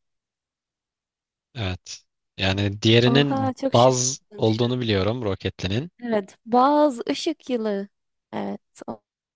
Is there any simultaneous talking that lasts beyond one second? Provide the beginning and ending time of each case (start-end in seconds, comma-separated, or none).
3.0-4.9